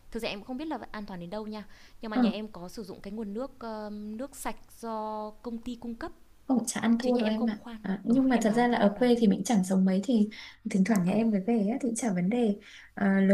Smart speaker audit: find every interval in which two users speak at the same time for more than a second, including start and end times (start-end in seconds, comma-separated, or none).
7.0-9.2